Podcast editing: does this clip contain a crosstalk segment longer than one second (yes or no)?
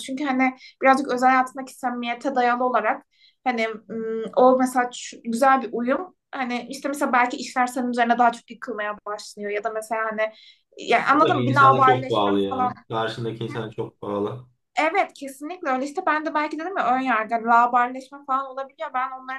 yes